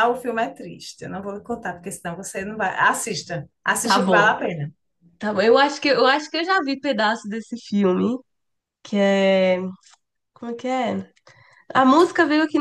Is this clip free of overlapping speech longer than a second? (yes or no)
yes